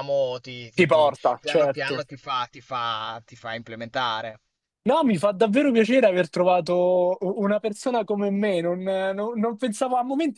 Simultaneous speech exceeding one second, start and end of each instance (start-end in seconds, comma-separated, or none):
0.7-2.1